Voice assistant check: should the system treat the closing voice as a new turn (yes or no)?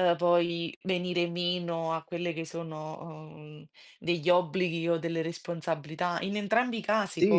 yes